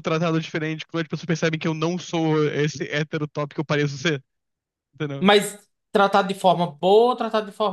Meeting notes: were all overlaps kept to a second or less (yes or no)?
yes